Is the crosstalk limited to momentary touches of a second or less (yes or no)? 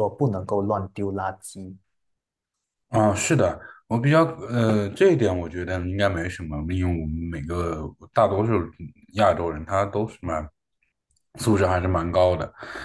yes